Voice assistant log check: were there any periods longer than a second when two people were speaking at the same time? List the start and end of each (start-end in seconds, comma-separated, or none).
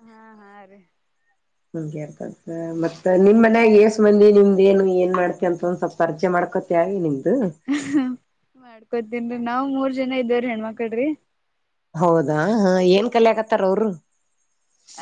none